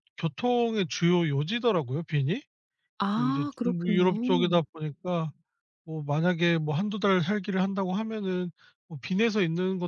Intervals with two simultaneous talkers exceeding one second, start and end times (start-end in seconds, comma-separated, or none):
3.1-4.6